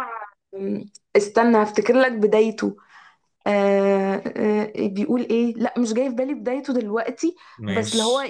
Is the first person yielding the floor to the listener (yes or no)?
no